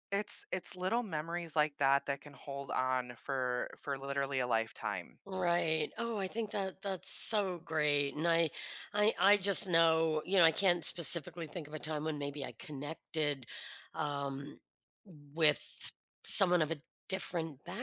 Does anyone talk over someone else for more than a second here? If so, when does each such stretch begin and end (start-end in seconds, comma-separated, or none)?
none